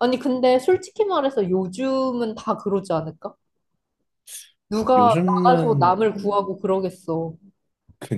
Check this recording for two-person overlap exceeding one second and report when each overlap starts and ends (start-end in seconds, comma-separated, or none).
5.0-6.4